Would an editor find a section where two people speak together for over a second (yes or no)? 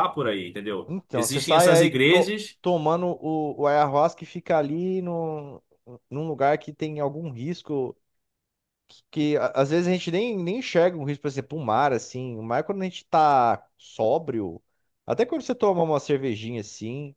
yes